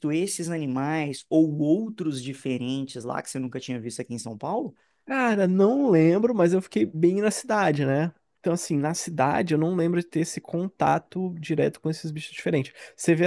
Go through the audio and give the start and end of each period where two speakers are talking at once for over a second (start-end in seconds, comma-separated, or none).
none